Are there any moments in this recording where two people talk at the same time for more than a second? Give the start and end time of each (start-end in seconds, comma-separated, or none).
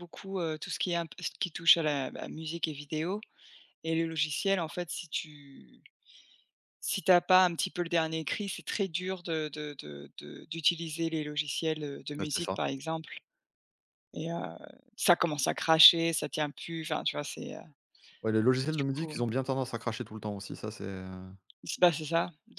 none